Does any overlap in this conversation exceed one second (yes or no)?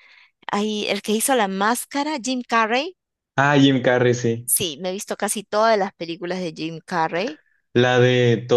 no